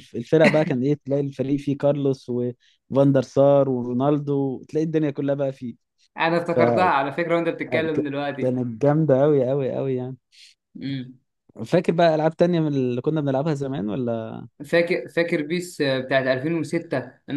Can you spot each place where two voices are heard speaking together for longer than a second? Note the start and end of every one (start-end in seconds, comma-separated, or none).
none